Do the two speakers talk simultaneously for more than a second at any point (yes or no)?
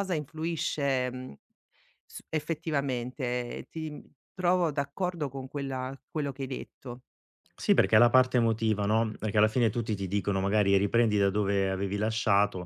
no